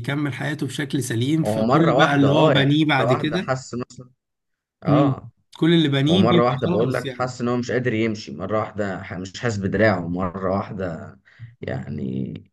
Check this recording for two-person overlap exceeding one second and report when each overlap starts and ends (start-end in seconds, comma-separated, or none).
1.4-3.5, 6.1-7.4